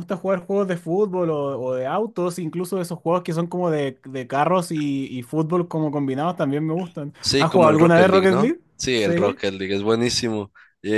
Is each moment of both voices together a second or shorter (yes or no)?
no